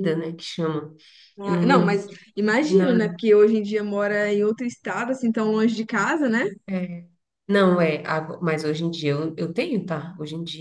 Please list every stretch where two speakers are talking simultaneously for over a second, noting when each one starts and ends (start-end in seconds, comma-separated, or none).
none